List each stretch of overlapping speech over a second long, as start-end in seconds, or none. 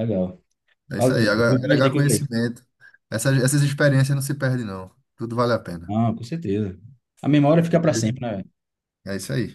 1.0-2.2